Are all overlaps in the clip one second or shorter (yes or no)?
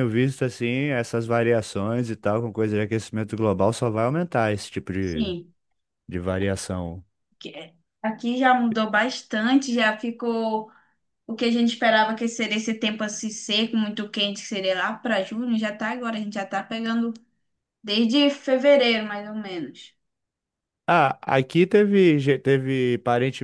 yes